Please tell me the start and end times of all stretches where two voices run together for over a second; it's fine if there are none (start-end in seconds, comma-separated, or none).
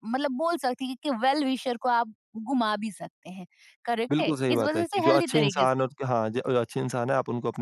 4.1-5.9